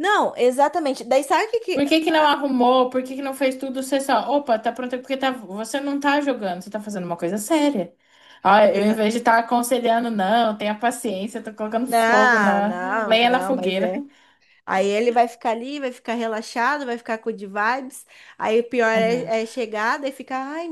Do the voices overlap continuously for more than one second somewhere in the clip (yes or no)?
yes